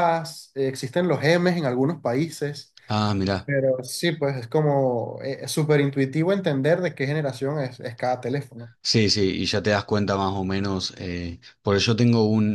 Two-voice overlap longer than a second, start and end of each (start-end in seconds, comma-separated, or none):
none